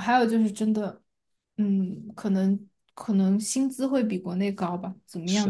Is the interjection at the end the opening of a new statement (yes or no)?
yes